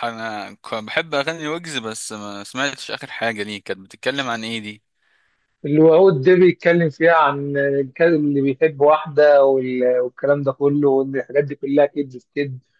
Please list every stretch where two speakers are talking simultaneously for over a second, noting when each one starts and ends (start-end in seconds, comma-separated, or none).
none